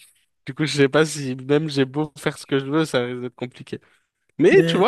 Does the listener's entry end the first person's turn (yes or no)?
no